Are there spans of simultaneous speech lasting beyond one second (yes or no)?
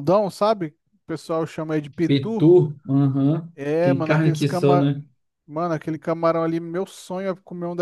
yes